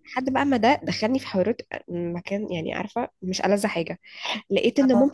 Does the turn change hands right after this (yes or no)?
no